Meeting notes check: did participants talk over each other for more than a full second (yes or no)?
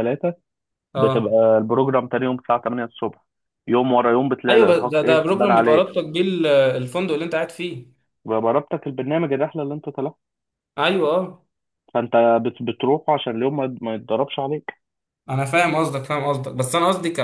yes